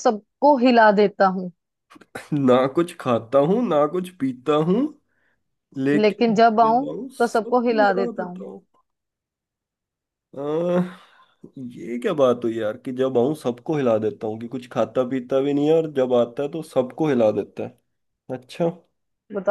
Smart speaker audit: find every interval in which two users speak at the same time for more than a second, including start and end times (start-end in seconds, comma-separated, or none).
5.9-8.5